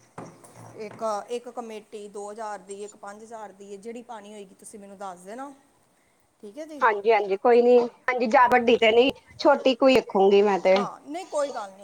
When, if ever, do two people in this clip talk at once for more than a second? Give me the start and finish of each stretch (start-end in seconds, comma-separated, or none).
none